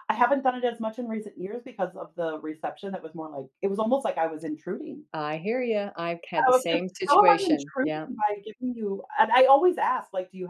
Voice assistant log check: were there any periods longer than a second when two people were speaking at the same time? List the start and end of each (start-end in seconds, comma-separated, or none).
6.5-8.1